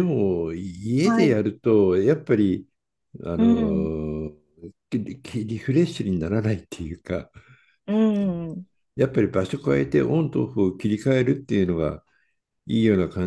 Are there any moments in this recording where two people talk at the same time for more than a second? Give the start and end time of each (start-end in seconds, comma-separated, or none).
none